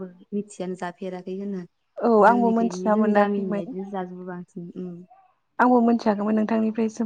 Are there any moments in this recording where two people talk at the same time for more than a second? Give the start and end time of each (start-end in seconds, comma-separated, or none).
2.3-3.6